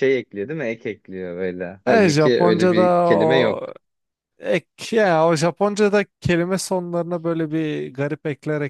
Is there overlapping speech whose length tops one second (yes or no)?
yes